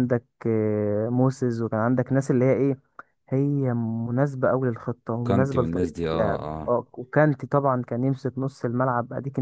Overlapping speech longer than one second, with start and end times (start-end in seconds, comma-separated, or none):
5.2-6.8